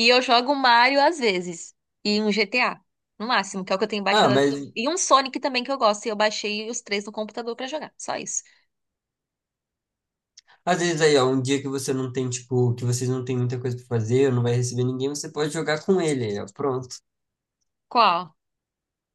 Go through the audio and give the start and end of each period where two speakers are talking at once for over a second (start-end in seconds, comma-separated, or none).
none